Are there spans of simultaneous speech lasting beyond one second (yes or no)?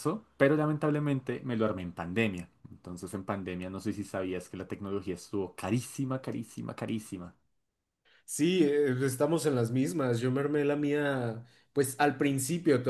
no